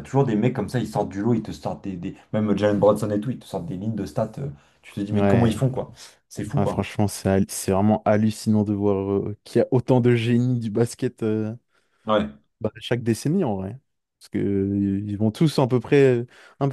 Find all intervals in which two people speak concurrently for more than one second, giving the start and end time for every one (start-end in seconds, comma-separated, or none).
none